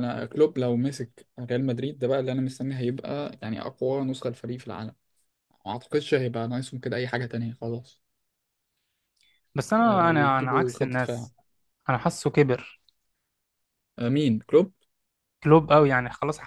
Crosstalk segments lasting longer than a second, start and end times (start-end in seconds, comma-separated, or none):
9.8-11.3